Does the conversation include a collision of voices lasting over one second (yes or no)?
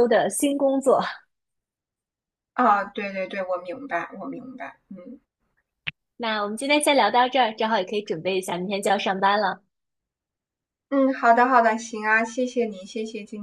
no